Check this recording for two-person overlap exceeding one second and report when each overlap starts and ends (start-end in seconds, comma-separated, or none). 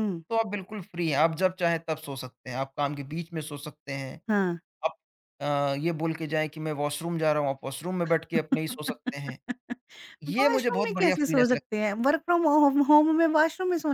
10.4-11.6